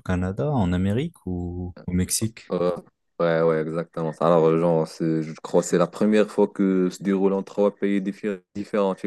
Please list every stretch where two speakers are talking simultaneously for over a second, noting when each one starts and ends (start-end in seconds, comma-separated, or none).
none